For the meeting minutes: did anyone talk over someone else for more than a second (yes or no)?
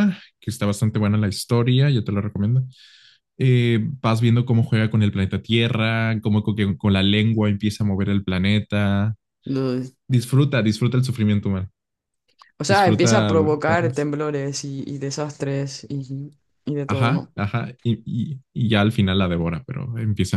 yes